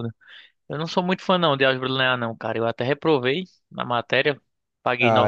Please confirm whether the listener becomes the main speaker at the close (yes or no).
yes